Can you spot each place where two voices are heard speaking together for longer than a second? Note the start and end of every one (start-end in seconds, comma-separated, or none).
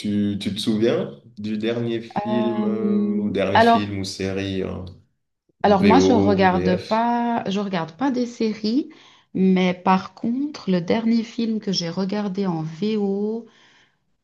2.3-3.9, 5.6-7.1